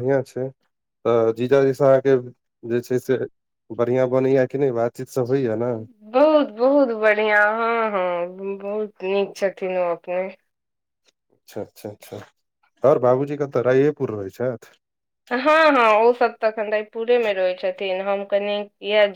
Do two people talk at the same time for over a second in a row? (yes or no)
no